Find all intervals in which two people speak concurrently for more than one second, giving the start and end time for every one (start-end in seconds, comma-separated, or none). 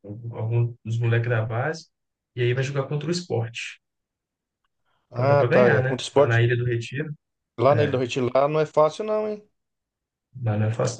5.1-6.4